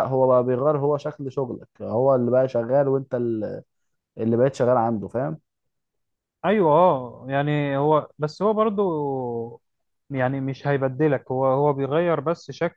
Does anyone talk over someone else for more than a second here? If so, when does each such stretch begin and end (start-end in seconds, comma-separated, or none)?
none